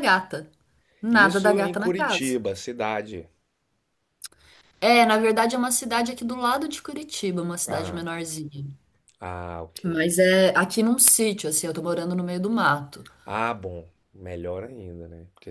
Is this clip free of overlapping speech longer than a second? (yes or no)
no